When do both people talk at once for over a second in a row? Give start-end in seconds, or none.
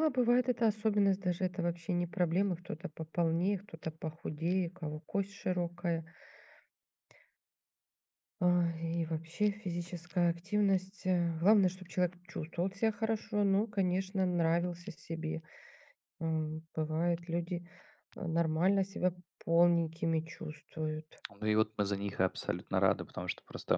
none